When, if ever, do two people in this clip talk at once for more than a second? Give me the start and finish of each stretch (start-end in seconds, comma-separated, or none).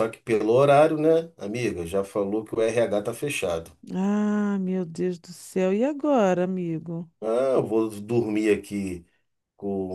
none